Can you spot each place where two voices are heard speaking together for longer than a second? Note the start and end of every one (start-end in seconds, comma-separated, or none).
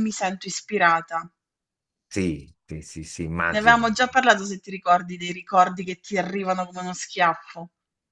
none